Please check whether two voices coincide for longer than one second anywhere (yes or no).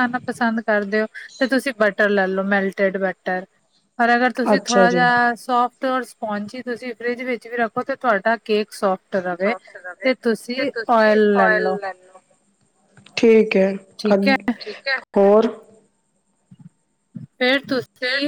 no